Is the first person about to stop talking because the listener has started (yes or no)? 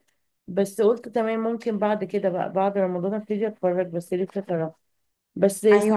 yes